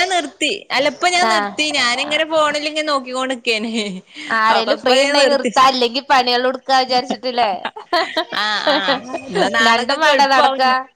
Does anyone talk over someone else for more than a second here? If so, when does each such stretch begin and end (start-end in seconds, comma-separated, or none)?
none